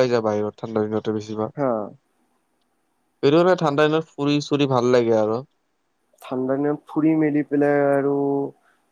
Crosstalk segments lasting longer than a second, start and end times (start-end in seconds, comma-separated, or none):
none